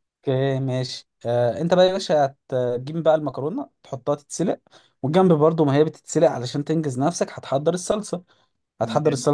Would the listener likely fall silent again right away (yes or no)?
yes